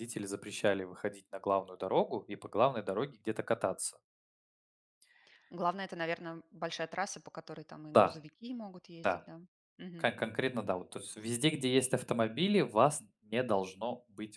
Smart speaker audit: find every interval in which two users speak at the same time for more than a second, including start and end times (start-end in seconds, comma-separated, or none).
none